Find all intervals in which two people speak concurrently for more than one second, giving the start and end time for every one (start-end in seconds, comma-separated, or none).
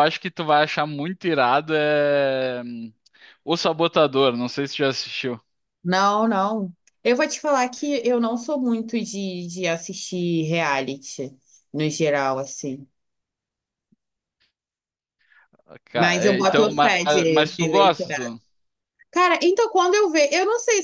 15.9-18.4